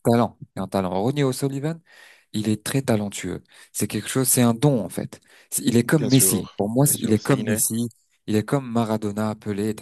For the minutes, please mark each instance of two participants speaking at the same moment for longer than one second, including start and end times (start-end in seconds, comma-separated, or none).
5.8-7.6